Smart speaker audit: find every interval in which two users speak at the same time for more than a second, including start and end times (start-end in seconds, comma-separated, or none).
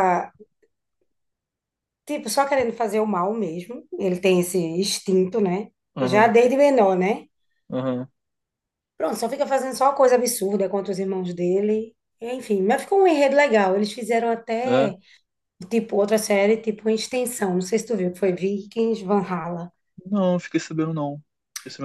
none